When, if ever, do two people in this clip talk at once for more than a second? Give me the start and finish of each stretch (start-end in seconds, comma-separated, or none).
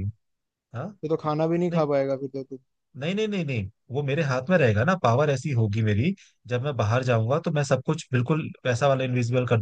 none